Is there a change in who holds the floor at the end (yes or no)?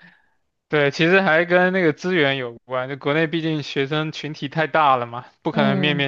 no